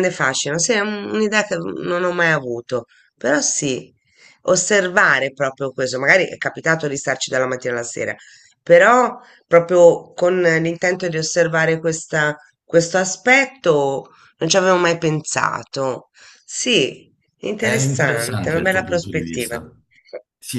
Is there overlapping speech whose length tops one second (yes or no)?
yes